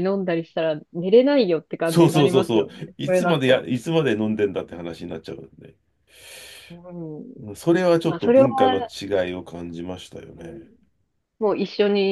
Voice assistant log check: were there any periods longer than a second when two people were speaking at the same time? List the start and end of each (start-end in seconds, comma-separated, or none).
1.9-3.7